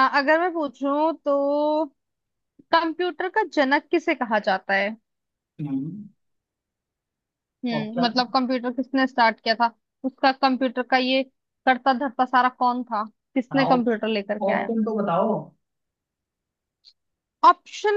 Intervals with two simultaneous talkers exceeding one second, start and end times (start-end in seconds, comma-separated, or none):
13.5-14.7